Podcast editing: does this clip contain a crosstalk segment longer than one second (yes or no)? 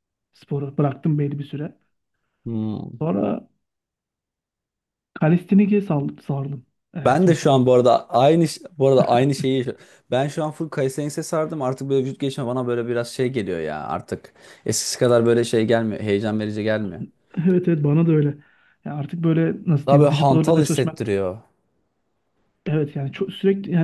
yes